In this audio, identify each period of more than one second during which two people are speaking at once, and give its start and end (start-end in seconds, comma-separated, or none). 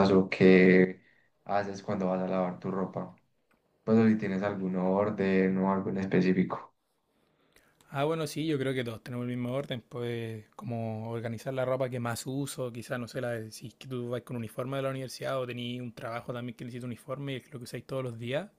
none